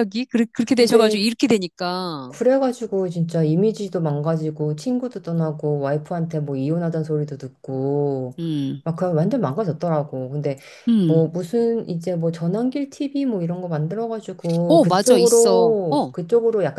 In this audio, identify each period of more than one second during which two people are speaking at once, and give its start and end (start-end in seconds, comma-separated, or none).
14.7-16.1